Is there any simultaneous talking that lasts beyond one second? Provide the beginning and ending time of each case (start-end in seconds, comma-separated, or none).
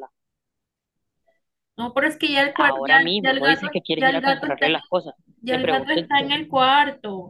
2.5-4.8